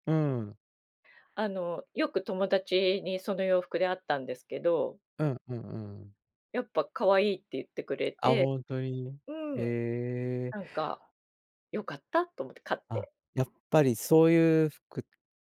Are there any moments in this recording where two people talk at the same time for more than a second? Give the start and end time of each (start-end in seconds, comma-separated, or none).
none